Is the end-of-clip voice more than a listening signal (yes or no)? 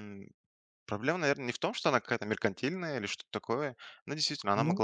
no